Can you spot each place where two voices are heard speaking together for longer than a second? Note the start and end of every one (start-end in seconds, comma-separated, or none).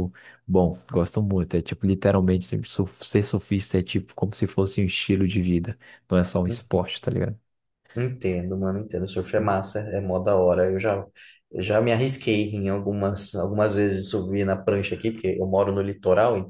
none